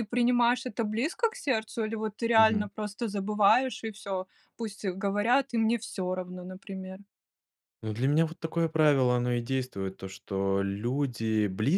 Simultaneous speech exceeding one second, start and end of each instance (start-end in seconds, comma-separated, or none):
none